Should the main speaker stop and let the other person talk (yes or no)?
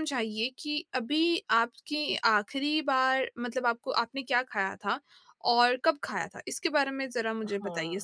yes